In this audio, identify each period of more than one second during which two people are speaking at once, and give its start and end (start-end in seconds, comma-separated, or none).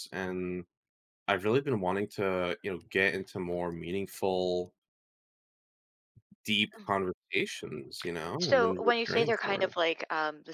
8.4-9.8